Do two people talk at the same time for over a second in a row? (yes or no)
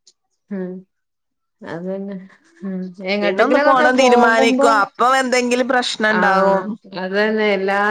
yes